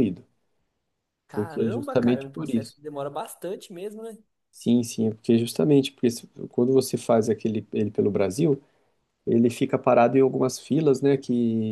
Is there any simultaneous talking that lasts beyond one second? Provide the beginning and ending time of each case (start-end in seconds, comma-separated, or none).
1.3-2.8